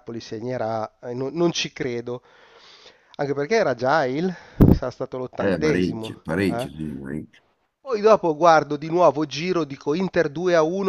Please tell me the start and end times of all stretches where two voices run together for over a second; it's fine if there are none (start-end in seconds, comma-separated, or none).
5.4-6.7